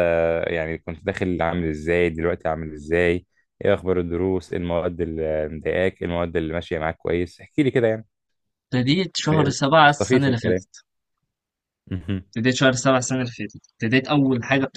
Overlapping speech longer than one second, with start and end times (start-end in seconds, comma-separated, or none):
9.3-10.7